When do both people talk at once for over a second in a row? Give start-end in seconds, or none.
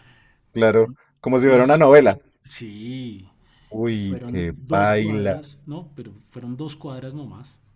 3.9-5.5